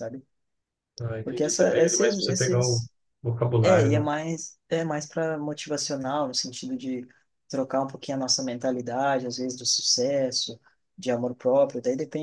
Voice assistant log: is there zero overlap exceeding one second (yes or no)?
no